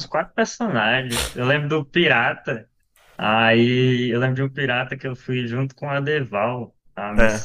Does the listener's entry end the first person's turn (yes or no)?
no